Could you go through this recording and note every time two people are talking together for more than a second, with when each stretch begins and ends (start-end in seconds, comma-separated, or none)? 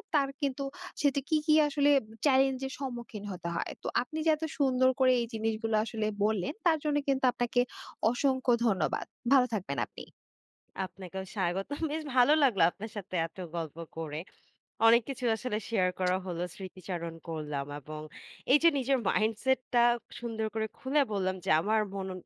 none